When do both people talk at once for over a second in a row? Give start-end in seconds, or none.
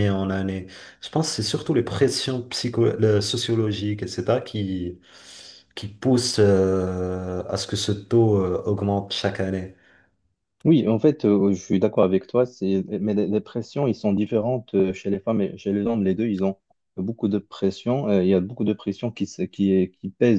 none